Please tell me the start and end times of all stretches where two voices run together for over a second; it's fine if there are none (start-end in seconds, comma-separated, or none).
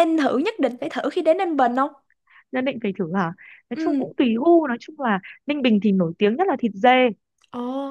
none